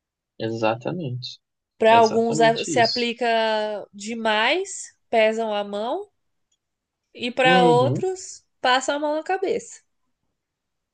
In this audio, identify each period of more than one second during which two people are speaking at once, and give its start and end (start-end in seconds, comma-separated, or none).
1.9-3.1